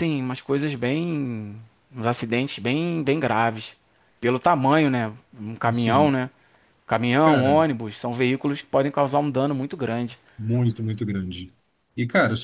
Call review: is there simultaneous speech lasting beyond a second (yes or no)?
no